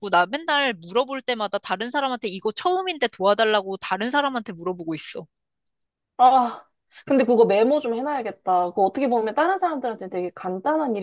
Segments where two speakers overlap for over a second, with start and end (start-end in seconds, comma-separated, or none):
none